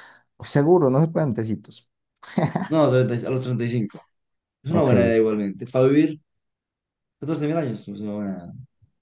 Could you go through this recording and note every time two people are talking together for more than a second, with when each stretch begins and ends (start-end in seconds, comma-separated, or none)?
none